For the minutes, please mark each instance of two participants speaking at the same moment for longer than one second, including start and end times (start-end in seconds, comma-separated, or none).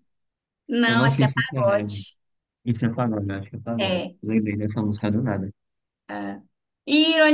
0.9-2.1